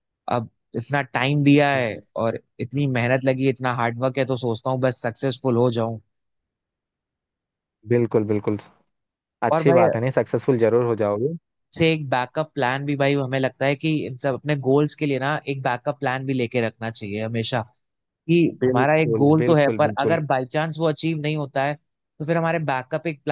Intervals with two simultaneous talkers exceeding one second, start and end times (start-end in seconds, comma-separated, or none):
18.6-20.2